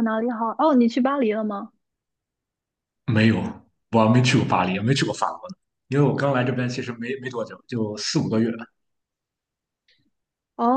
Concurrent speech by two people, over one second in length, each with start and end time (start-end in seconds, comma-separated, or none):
none